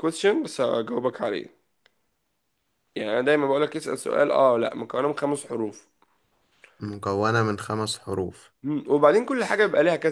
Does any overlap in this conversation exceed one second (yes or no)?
no